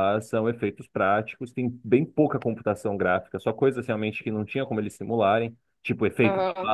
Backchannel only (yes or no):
yes